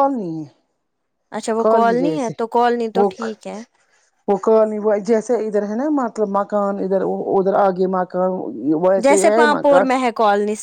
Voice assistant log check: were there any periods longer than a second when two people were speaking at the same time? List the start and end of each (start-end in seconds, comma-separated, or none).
none